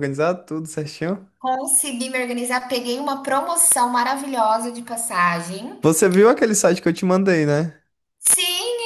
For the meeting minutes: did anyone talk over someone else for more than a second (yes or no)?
no